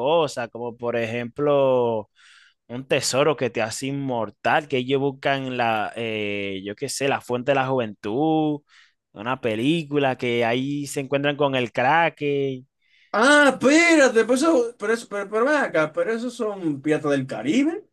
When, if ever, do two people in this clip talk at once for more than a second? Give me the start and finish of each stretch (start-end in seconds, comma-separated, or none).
none